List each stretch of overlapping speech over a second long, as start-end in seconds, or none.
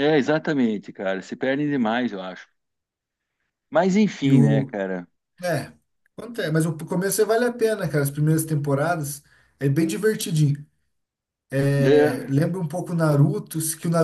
none